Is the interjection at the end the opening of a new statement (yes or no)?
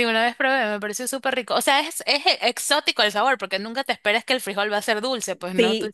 yes